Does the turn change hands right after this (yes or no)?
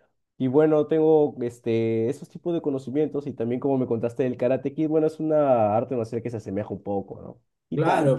yes